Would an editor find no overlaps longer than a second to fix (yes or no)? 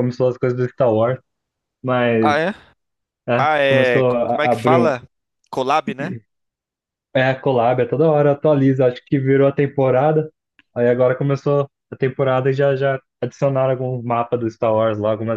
no